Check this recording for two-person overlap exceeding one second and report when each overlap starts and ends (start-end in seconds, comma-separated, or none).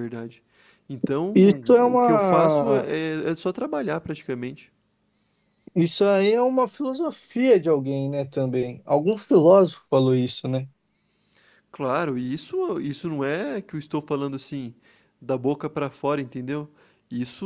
1.3-2.9